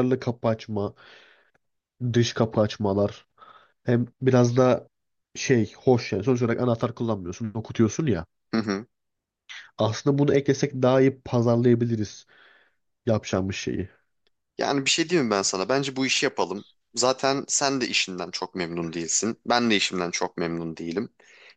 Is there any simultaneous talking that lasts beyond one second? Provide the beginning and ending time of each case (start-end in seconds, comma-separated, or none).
none